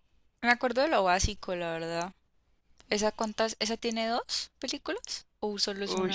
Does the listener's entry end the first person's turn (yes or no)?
yes